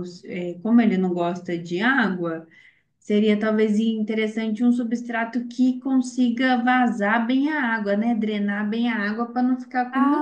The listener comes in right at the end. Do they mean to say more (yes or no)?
yes